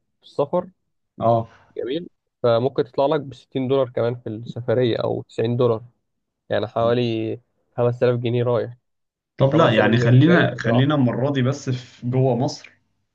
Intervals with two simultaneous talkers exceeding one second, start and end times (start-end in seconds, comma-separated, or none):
9.5-10.9